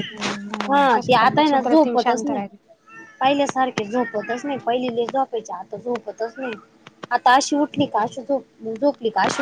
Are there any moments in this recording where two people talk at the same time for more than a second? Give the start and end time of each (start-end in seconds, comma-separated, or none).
0.7-2.4